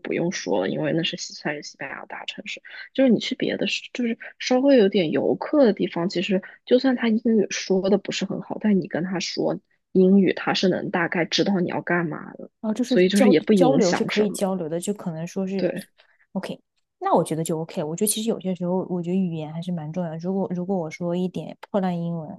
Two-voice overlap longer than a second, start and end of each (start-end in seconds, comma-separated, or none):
12.8-14.4